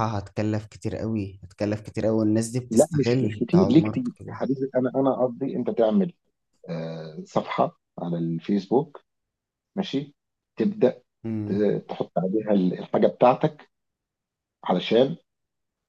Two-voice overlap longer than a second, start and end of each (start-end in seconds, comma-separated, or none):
2.7-4.4